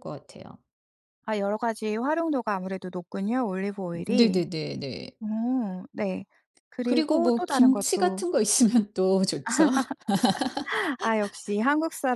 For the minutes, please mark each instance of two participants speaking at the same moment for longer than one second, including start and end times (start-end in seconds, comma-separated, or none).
6.8-8.2